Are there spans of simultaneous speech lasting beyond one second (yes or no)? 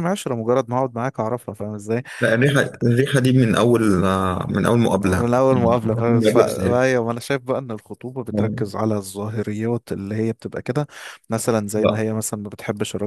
yes